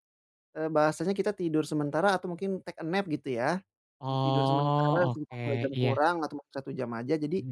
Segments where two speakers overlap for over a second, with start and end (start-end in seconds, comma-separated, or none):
4.1-6.0